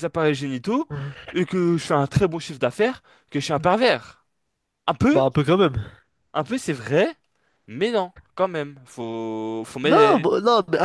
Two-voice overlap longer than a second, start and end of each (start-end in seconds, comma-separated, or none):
none